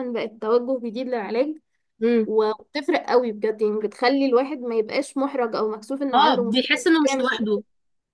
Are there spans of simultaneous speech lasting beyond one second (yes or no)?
yes